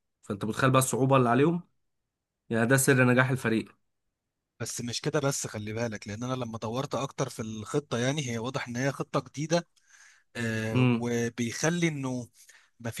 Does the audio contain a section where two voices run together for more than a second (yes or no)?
no